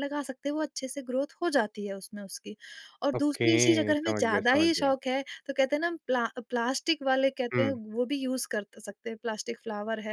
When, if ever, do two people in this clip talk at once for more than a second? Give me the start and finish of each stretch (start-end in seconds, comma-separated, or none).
3.2-4.9